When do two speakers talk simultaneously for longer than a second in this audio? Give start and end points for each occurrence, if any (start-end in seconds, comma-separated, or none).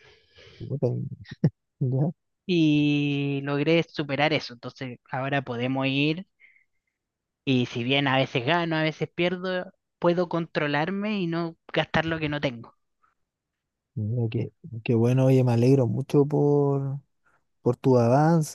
none